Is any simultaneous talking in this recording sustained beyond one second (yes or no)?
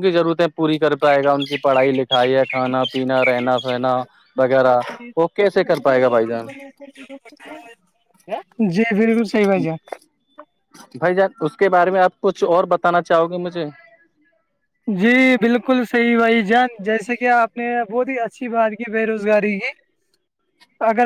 no